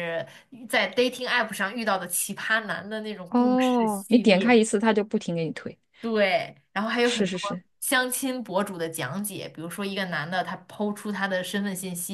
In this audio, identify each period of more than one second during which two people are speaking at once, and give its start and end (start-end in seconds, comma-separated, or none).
3.3-4.5